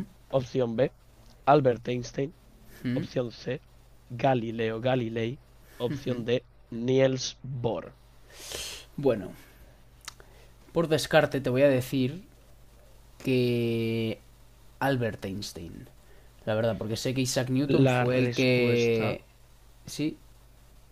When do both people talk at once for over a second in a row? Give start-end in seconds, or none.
17.8-19.2